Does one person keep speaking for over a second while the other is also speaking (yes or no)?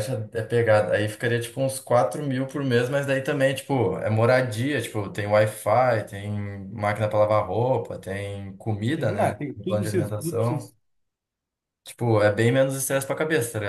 yes